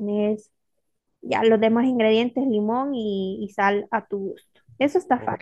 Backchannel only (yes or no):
no